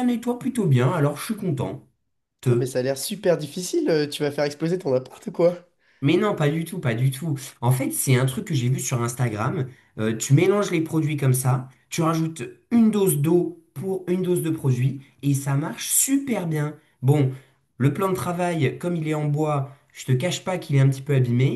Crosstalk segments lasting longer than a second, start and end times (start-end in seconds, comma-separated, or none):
none